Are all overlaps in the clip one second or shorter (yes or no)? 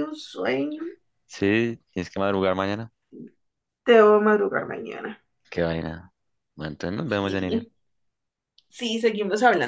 yes